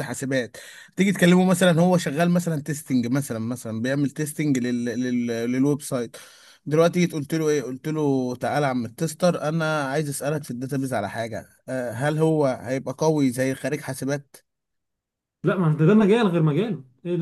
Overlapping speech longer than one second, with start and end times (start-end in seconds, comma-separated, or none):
none